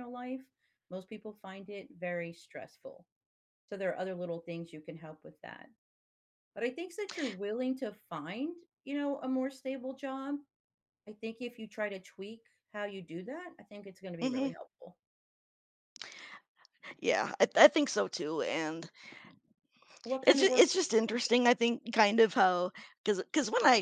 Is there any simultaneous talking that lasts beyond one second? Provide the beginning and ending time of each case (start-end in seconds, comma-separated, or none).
20.2-21.5